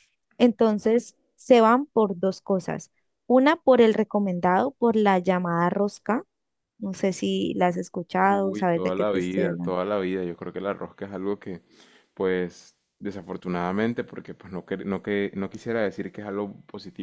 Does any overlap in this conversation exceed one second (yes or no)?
yes